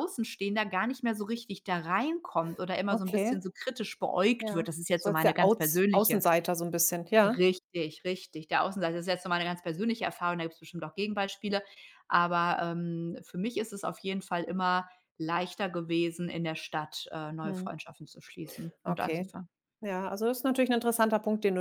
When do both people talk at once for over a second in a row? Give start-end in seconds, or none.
4.4-6.2